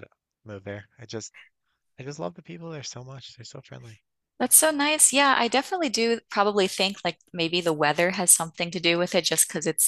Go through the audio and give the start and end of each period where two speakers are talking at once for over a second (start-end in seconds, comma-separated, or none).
none